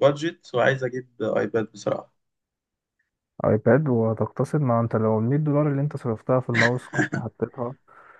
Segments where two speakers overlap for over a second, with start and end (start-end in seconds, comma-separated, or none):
none